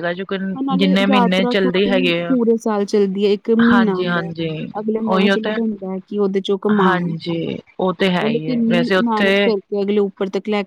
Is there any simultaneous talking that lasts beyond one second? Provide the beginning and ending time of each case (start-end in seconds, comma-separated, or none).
0.8-2.4, 8.2-9.4